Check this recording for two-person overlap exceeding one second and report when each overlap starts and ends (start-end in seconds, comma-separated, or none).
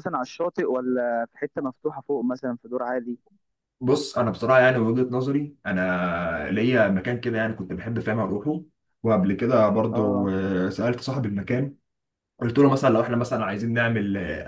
none